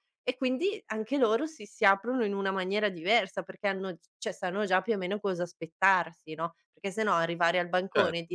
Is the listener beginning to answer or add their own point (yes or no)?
no